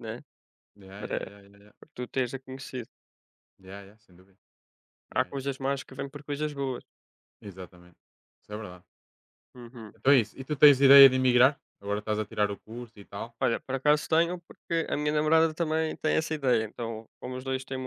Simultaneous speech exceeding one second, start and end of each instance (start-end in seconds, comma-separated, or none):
none